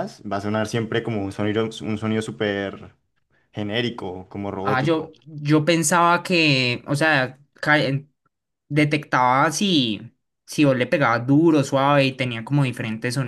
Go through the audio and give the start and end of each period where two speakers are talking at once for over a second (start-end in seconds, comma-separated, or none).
none